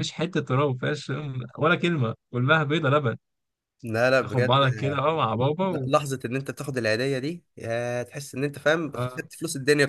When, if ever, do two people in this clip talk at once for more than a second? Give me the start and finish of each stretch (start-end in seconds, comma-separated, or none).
none